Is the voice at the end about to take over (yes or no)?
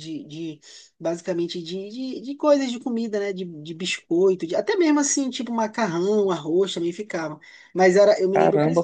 yes